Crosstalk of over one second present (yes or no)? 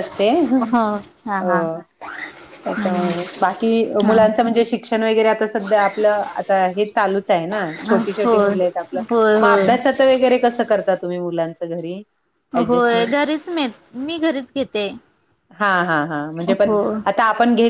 no